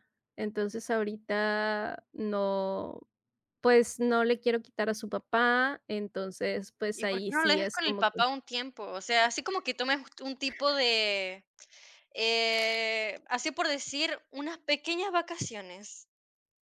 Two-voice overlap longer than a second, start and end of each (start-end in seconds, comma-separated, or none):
6.9-8.2